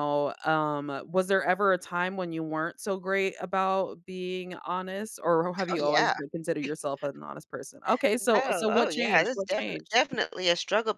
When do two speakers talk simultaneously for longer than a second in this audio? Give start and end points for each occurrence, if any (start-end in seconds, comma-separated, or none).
8.2-10.0